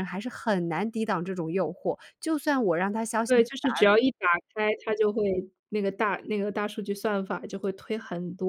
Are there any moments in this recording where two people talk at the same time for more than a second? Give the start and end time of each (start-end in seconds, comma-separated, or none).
none